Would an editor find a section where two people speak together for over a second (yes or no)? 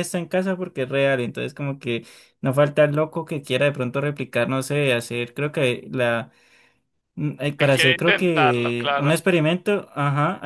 yes